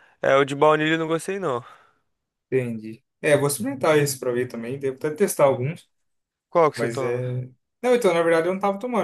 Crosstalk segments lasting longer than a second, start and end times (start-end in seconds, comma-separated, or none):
none